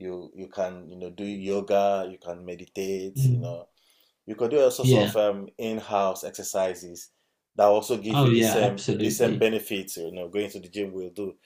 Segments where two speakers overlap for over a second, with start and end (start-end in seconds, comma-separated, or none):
8.1-9.5